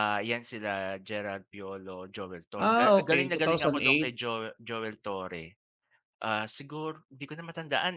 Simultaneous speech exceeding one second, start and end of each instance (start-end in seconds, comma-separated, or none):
2.6-4.1